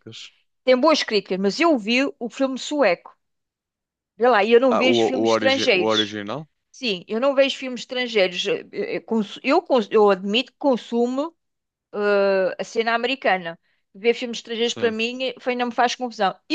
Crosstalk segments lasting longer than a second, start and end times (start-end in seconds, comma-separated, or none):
4.7-6.2